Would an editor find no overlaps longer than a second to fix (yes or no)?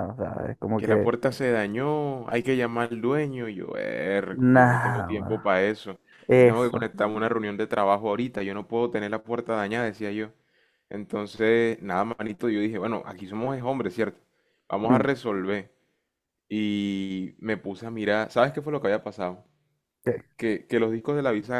no